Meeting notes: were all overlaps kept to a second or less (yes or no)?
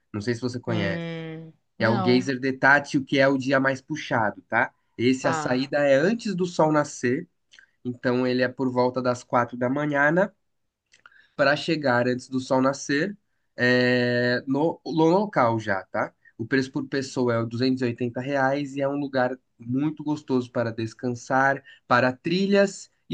yes